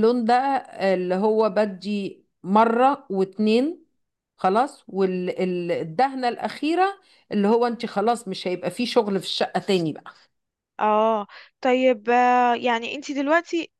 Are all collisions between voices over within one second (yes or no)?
yes